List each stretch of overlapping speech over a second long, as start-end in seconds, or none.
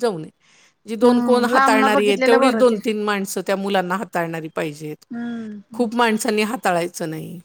1.0-2.8